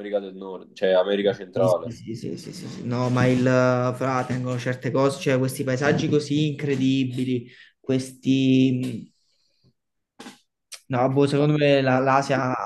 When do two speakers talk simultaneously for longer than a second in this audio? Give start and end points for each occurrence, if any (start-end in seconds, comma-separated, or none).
none